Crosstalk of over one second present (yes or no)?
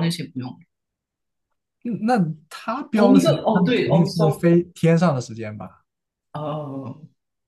yes